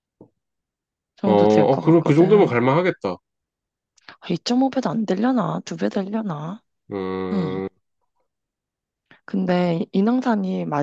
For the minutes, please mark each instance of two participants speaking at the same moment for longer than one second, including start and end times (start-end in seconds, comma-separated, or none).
1.2-2.6